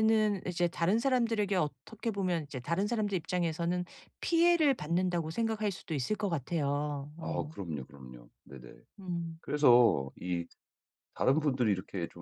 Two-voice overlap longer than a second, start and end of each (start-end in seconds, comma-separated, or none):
none